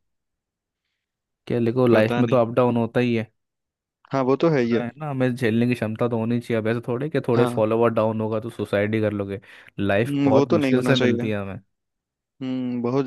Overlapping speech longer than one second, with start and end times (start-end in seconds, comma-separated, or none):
10.1-11.3